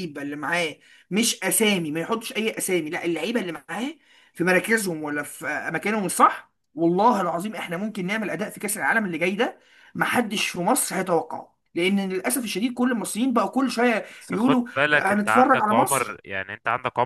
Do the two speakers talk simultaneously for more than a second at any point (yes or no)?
yes